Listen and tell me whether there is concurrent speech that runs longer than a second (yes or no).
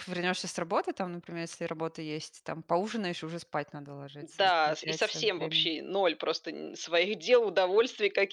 yes